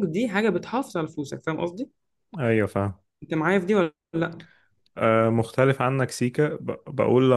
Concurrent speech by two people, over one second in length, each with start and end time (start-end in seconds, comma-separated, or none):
none